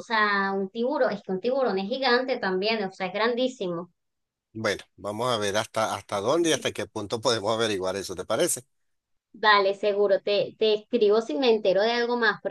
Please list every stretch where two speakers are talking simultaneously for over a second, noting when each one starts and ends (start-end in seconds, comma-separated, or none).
none